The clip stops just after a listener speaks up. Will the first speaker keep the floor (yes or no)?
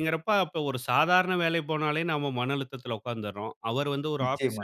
yes